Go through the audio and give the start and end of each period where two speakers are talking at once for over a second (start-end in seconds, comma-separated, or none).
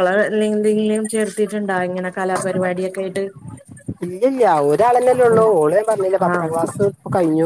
none